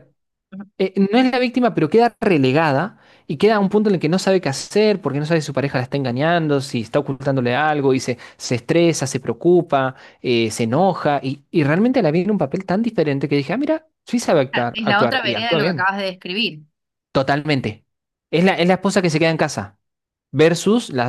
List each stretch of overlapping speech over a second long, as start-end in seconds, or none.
14.5-15.9